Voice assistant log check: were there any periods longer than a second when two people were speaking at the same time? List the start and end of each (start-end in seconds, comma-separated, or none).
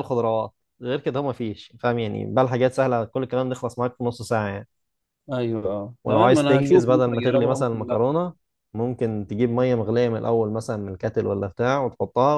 6.0-8.0